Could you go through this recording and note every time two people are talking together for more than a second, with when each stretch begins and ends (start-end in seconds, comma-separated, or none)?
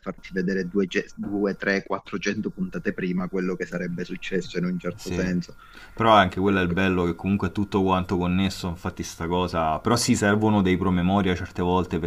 none